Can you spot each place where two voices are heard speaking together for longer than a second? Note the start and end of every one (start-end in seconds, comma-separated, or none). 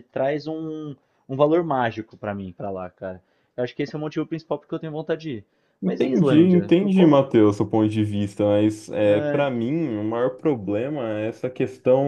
5.8-7.2